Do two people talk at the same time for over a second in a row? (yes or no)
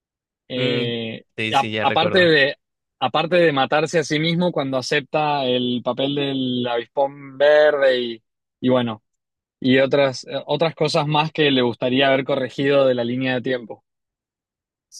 yes